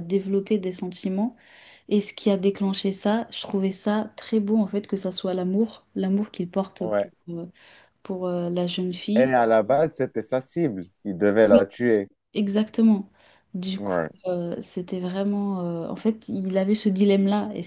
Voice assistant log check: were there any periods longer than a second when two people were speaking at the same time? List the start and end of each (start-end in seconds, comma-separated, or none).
none